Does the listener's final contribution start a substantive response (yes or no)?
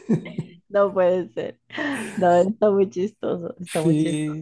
yes